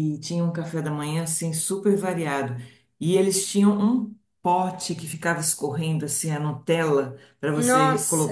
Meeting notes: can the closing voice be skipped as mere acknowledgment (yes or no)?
yes